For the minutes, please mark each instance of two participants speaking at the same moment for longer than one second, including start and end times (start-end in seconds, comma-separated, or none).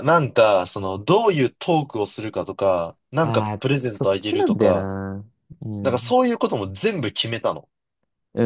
3.2-4.9